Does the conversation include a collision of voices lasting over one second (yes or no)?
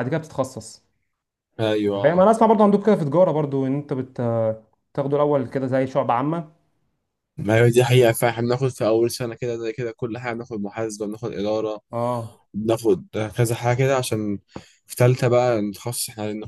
no